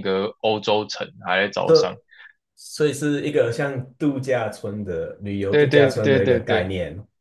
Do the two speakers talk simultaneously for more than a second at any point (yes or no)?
yes